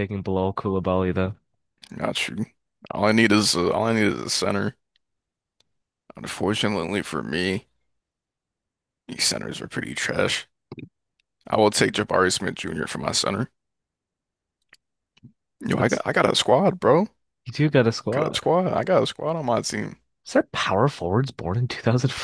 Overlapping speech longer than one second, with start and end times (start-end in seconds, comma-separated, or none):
none